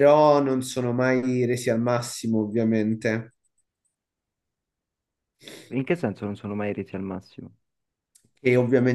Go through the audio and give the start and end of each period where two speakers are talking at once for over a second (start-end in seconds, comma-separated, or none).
none